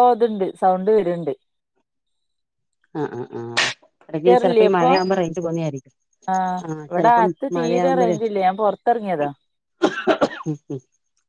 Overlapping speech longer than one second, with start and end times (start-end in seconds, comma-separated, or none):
none